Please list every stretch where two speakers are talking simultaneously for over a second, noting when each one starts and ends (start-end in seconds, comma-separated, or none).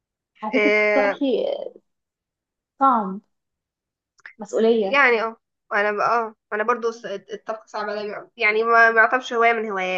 none